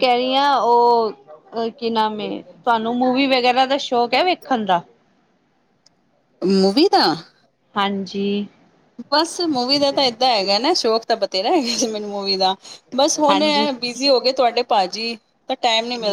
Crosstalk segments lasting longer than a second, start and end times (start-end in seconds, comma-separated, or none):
none